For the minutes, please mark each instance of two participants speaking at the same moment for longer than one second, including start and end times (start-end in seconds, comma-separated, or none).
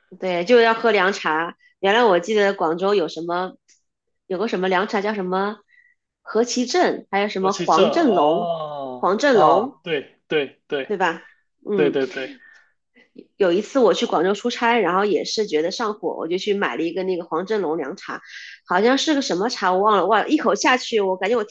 7.4-9.8